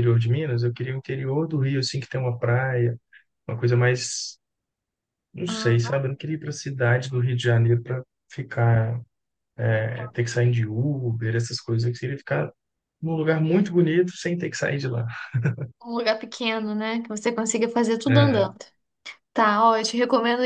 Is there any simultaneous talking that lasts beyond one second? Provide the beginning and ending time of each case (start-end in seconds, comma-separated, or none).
none